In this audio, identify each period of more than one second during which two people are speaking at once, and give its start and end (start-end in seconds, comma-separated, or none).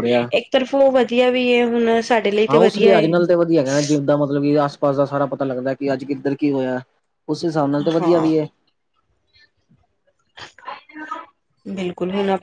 none